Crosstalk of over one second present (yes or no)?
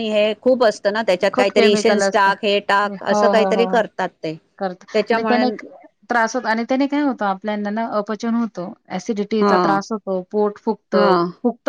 yes